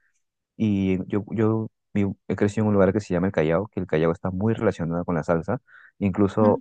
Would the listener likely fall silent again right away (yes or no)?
yes